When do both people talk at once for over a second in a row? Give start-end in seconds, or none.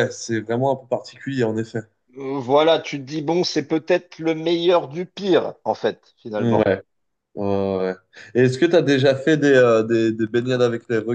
none